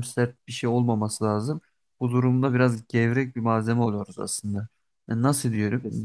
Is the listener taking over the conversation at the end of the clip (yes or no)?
no